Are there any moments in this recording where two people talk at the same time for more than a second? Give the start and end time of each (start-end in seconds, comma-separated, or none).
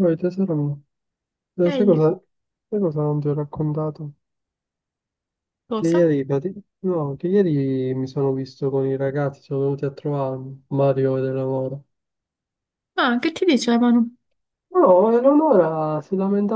none